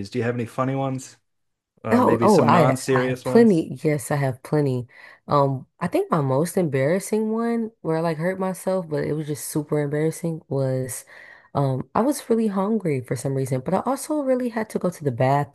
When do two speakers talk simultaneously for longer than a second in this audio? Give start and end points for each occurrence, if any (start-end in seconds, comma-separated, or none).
1.9-3.6